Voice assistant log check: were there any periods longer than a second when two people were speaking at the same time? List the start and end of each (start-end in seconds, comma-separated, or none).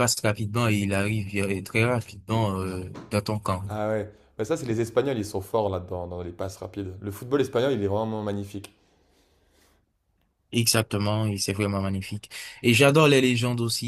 none